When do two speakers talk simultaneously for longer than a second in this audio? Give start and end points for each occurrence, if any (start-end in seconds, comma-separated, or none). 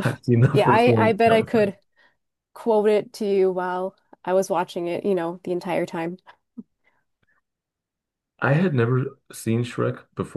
0.5-1.7